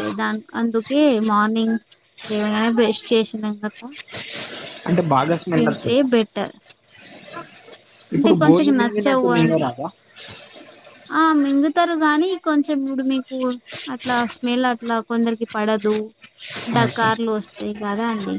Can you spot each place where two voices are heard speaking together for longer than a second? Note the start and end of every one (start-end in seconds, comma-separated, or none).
8.2-9.7